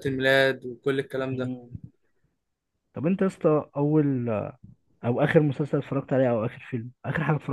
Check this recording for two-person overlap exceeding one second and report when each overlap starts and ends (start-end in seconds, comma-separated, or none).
none